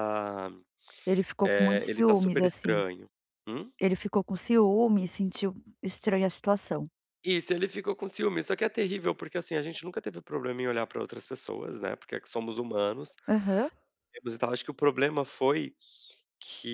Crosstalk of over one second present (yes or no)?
yes